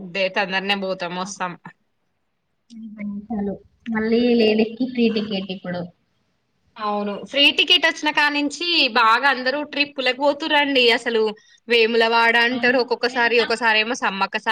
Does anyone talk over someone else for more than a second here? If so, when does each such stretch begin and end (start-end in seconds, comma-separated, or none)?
none